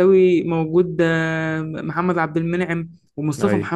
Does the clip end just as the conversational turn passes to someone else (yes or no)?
no